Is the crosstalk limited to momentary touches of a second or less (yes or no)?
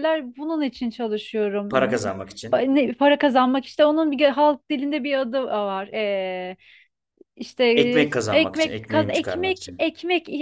no